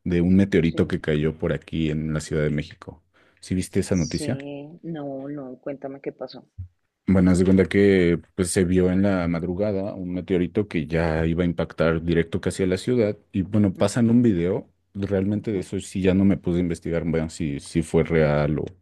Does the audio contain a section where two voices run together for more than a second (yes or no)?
no